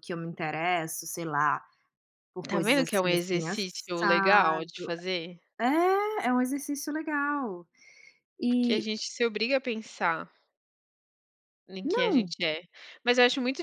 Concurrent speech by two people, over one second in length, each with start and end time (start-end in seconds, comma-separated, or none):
2.5-4.7